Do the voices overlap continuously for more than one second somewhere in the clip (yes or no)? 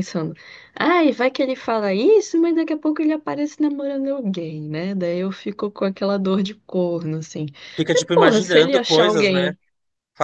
yes